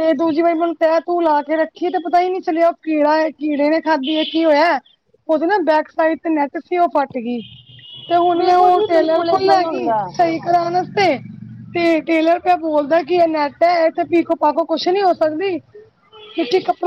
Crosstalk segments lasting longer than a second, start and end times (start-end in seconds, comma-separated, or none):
8.4-9.8